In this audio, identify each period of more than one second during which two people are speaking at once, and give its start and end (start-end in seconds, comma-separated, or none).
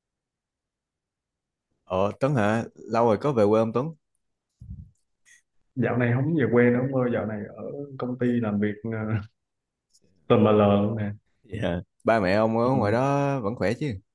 none